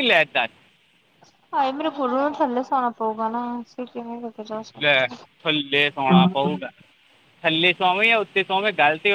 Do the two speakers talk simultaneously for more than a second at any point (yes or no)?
no